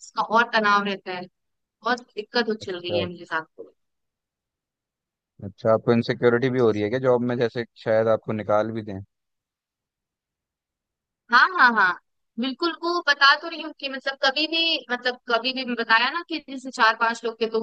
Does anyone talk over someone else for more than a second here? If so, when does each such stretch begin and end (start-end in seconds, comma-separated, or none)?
none